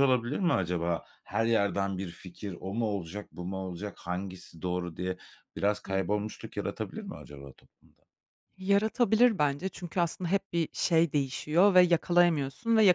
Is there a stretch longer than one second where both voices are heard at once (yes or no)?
no